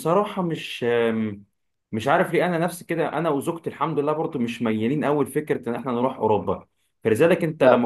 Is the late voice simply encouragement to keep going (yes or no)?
yes